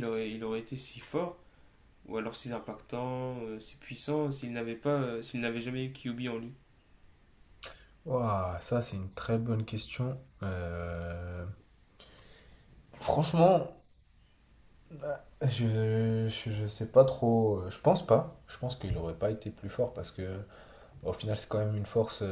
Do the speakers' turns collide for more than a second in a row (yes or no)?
no